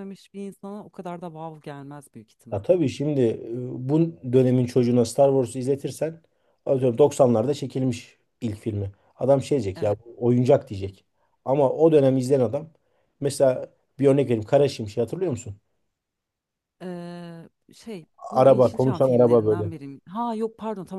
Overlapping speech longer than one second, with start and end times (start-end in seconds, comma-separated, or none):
18.3-19.7